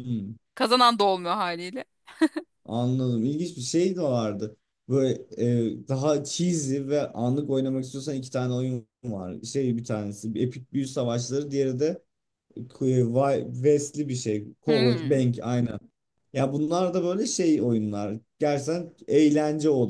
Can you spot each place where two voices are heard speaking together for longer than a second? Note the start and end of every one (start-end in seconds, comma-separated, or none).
none